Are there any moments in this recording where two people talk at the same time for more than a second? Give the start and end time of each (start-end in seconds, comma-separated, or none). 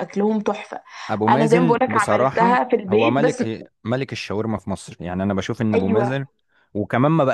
1.3-3.4